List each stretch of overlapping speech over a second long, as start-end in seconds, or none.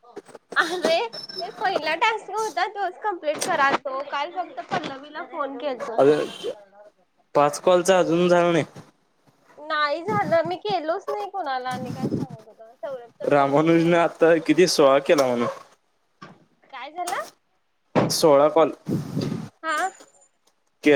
13.3-14.8